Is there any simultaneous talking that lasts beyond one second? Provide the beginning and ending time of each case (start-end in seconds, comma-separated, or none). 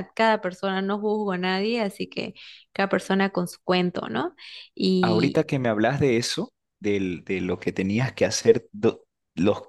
none